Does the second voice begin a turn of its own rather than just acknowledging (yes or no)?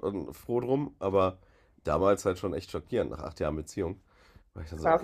yes